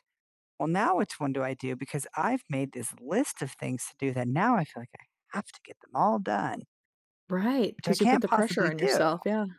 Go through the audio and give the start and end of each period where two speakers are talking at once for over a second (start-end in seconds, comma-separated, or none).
7.8-9.1